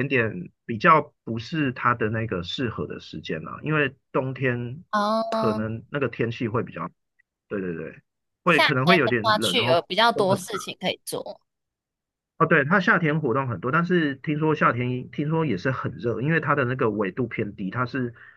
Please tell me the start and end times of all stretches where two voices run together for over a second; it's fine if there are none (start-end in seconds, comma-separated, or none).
8.5-10.4